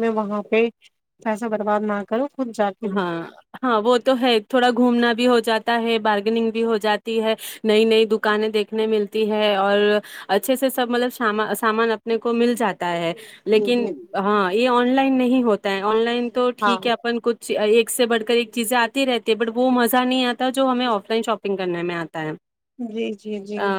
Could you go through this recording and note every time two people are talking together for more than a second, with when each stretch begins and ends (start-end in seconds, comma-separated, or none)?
none